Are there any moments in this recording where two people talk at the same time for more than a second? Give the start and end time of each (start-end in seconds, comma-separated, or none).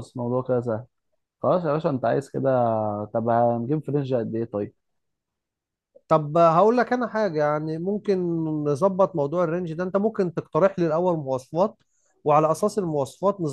none